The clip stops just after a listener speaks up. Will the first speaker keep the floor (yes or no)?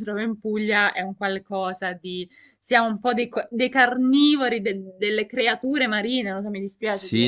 no